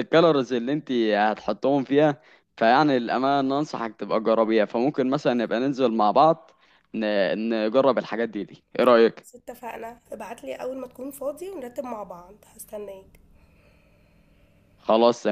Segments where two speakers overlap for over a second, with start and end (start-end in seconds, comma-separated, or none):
none